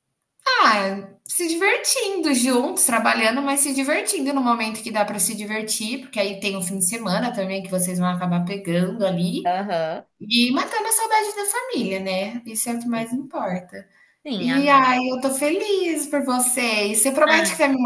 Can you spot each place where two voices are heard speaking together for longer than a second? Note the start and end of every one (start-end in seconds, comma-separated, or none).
none